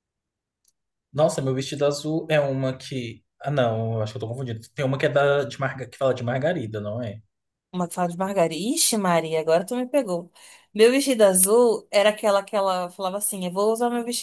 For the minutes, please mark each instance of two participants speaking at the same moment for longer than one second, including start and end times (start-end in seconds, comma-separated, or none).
none